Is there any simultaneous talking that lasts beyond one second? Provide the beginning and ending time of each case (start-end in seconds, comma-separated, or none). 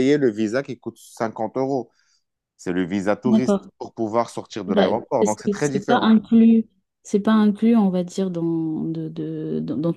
4.7-6.1